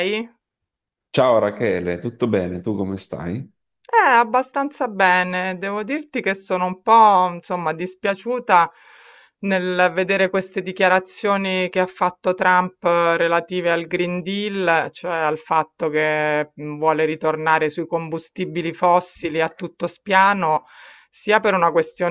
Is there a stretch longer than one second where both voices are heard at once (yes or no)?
no